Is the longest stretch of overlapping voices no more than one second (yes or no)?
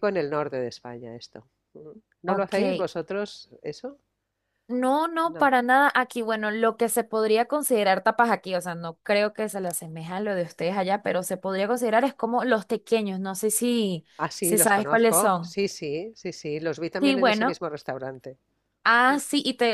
no